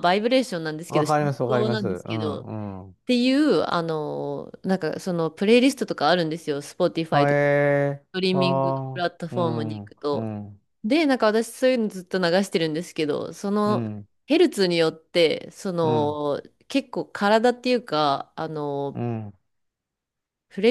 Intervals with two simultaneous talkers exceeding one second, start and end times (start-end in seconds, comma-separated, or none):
0.9-2.5, 8.1-10.3